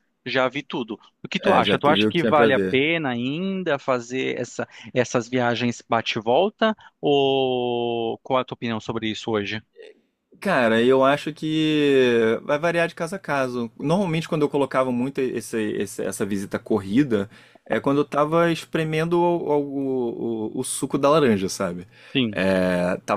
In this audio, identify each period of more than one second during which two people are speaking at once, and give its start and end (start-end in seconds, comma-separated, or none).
1.4-2.8